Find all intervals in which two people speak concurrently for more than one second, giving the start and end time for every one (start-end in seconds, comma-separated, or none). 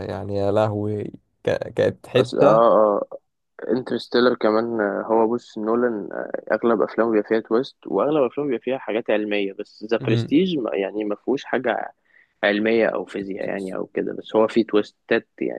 none